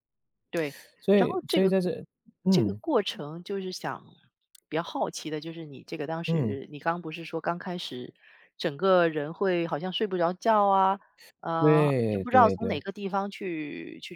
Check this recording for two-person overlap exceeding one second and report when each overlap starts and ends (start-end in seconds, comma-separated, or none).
11.6-12.8